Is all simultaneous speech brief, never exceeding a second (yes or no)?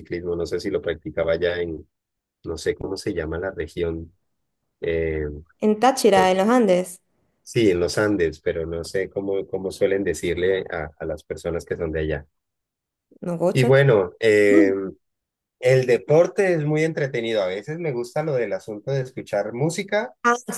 yes